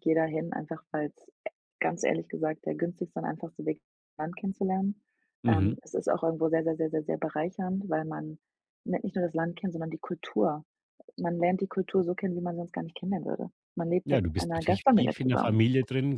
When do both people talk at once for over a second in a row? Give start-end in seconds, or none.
14.1-15.6